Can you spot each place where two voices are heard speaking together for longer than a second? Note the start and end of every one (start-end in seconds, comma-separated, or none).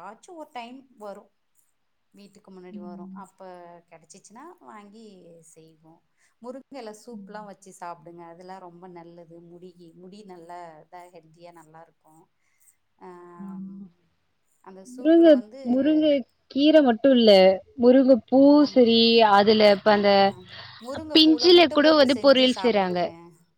21.1-23.0